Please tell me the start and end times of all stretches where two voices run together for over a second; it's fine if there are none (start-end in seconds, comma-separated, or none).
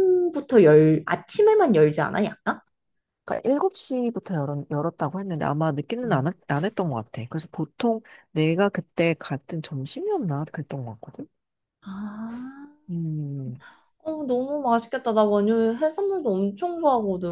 none